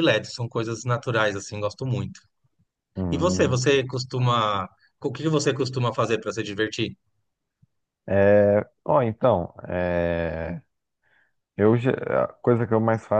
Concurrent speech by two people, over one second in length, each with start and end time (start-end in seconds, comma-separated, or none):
none